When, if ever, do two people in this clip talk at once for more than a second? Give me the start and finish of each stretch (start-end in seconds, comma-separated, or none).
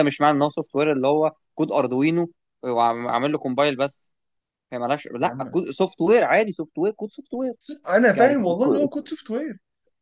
none